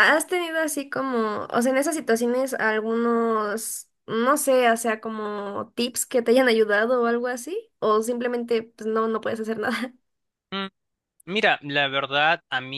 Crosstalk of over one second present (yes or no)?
no